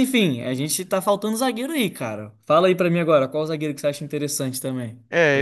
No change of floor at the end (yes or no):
no